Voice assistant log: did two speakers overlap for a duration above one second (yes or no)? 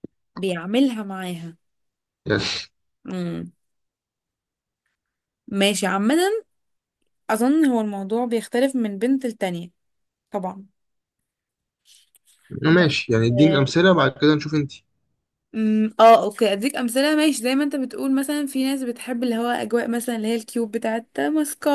no